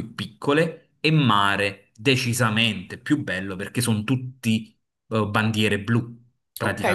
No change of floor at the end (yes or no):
no